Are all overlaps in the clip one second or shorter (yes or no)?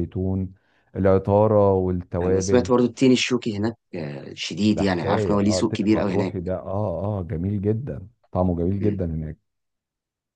no